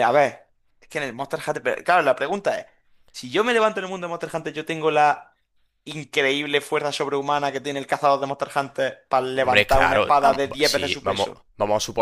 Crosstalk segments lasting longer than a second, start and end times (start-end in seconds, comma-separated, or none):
9.3-11.4